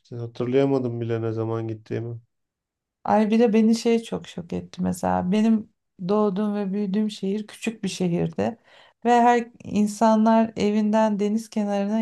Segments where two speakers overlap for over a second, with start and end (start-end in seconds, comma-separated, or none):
none